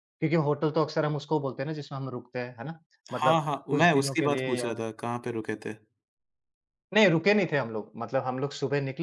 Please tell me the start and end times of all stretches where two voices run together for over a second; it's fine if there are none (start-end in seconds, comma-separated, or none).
3.1-4.7